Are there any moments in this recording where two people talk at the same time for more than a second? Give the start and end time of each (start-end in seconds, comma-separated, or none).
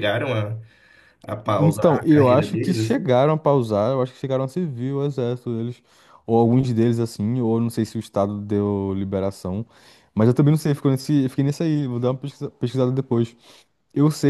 1.6-3.1